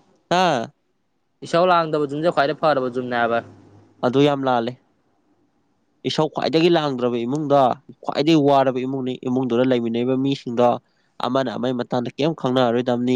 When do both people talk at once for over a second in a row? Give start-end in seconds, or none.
none